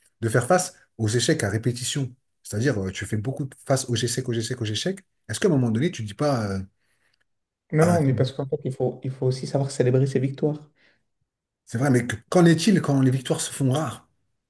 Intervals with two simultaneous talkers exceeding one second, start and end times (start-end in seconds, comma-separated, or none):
none